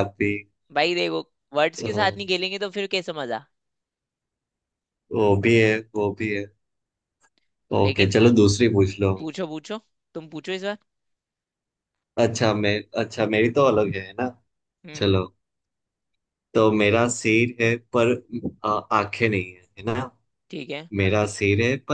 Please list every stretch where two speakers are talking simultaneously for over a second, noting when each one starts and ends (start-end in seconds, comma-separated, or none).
none